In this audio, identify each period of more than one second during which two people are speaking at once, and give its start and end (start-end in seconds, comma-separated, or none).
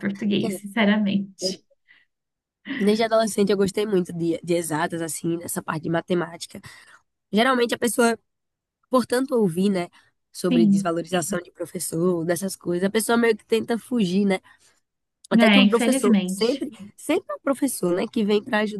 15.4-16.7